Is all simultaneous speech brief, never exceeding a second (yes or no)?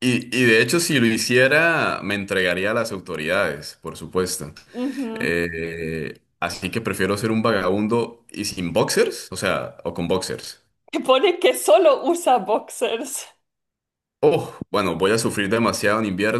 yes